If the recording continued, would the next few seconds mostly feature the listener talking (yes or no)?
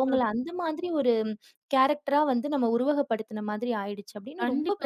yes